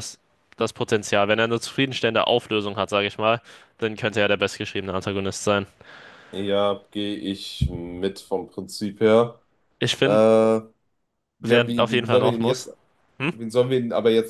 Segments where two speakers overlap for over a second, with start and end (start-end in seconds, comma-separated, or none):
11.4-12.7